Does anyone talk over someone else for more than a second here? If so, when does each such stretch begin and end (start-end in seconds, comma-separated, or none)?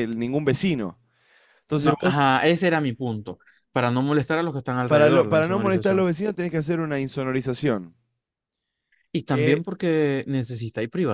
4.9-6.1